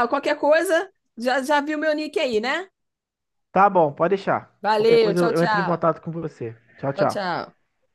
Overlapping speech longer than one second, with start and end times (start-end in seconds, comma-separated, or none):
4.6-5.8